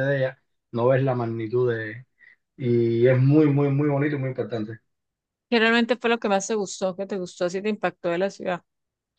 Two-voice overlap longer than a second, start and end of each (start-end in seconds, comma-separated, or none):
none